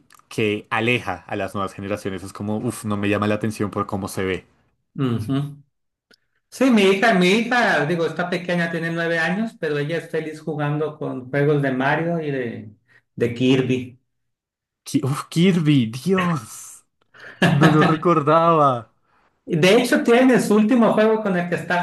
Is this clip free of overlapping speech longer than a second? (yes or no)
yes